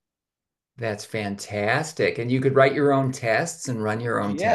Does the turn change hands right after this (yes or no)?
yes